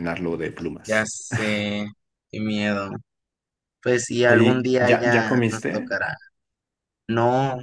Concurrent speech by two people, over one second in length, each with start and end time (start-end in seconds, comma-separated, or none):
4.3-6.0